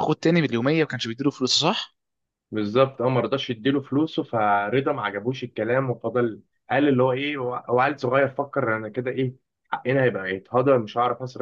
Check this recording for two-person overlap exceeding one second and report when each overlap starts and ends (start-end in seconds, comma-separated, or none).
none